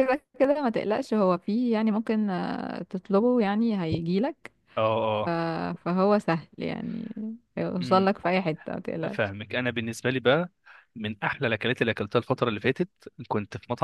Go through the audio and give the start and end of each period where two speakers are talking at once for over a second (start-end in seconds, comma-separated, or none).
none